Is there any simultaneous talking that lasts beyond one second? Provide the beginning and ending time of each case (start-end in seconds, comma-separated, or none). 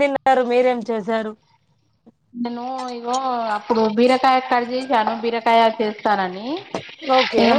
none